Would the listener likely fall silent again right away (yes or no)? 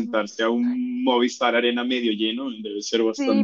no